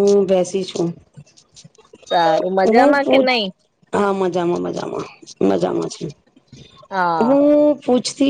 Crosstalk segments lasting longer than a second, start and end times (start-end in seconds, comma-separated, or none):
none